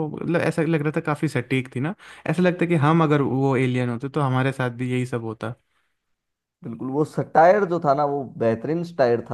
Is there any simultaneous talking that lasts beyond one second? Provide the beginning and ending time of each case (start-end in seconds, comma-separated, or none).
none